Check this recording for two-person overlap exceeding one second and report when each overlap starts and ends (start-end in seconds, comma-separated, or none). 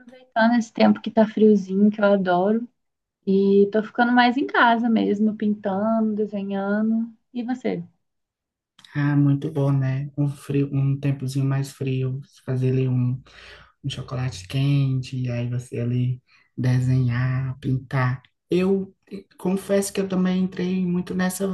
none